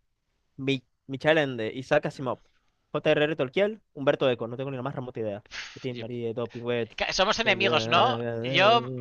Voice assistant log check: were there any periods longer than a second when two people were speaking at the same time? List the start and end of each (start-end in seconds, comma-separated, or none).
none